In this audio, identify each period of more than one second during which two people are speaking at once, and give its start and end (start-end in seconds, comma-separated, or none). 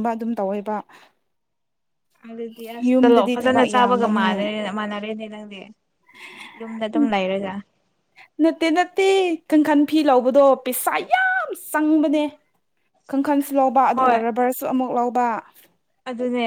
2.9-4.4